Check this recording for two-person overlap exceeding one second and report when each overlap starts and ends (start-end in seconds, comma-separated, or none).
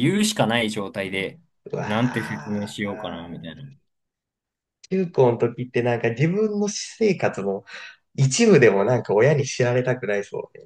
1.8-3.5